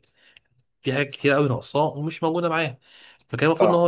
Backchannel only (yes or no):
yes